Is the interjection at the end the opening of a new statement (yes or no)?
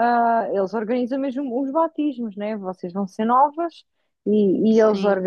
no